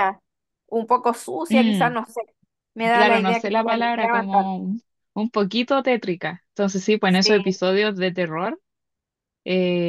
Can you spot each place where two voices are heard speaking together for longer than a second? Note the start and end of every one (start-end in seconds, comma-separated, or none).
2.9-4.7